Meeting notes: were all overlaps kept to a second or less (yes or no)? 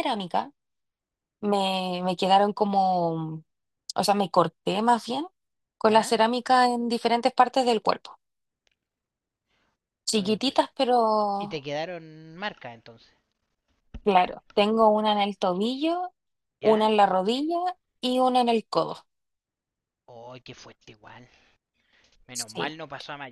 yes